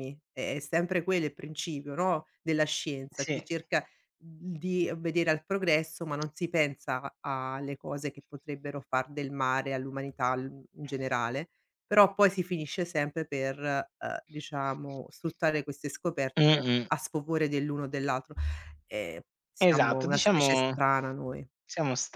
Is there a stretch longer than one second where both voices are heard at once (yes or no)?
yes